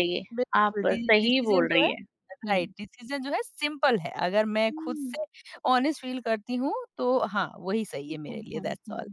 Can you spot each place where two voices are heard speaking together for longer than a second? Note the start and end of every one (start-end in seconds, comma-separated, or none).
0.6-1.9